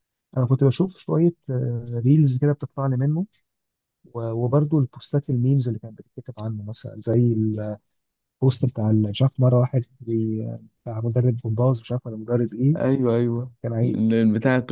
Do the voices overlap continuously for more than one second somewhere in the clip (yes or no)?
no